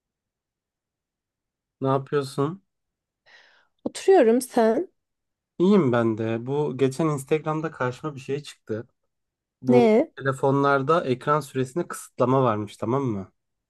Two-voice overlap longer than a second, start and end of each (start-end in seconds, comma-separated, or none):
none